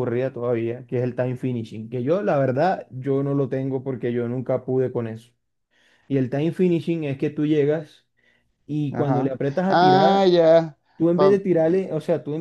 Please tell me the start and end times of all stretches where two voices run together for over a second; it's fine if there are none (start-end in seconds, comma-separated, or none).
8.9-10.3